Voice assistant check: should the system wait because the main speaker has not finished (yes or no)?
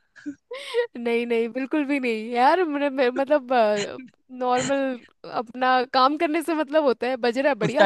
no